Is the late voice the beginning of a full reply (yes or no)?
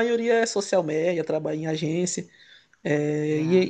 no